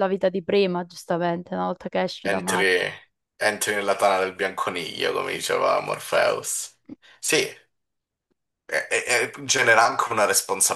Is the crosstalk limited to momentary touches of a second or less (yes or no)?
yes